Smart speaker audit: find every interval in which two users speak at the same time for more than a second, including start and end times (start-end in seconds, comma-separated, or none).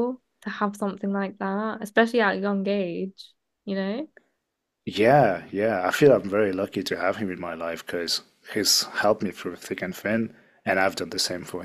none